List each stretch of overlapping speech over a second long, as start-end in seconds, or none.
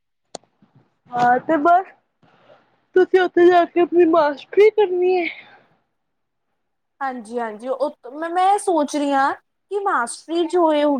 none